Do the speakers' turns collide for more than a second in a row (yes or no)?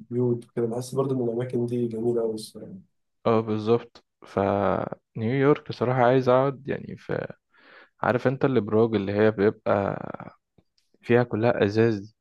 no